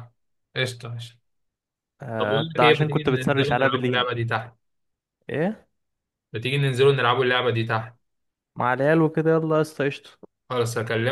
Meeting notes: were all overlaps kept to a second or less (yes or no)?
no